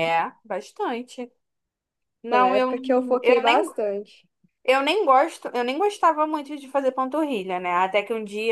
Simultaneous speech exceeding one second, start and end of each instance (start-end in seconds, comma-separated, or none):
2.3-3.6